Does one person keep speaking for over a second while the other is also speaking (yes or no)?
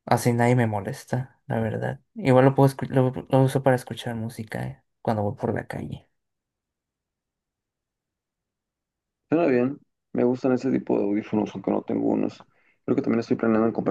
no